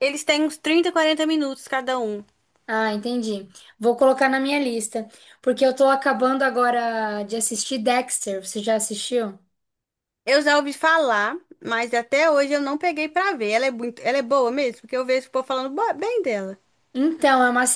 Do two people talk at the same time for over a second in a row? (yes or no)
no